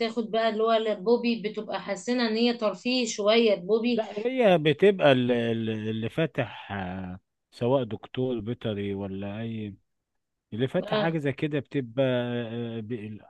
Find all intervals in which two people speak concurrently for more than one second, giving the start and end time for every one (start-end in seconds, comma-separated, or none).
none